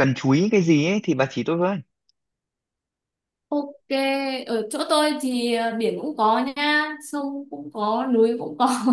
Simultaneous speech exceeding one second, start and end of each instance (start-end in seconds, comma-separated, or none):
none